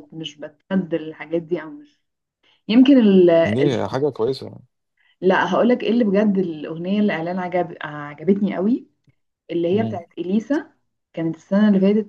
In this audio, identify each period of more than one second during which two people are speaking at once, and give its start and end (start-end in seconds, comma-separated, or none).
none